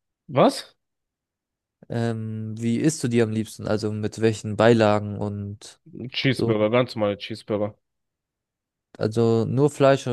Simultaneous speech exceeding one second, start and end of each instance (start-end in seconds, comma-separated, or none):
none